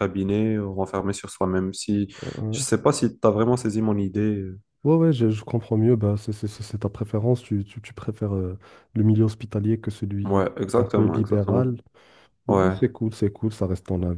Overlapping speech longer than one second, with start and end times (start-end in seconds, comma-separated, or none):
10.2-11.7